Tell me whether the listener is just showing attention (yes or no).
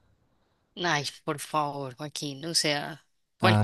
yes